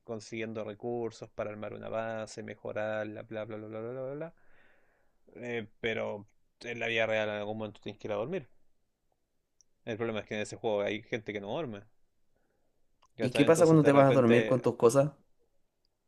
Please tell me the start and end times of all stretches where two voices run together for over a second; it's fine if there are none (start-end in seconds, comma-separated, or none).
13.2-14.6